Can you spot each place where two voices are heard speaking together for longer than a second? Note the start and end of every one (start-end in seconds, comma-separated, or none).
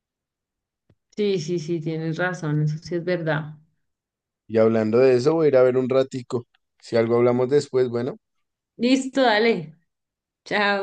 none